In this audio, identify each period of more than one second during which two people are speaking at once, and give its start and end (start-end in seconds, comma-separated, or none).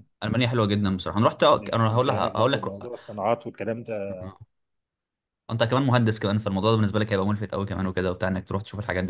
1.6-2.9